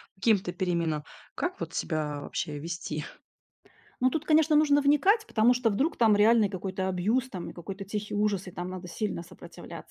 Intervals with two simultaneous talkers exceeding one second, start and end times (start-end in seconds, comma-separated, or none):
none